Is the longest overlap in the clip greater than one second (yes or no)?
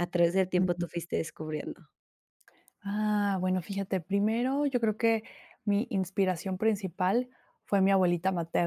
no